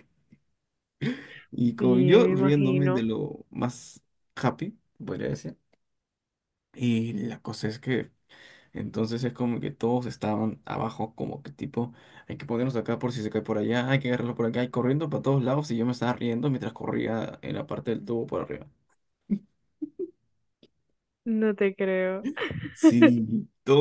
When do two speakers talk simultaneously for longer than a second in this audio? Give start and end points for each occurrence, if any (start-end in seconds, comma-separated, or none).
1.8-3.0